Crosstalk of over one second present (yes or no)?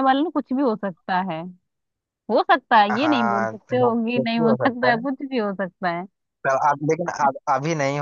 yes